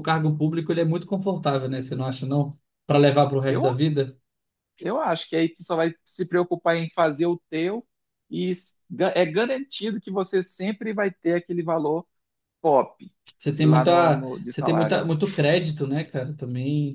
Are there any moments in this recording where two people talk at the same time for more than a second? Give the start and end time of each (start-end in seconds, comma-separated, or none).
13.6-15.0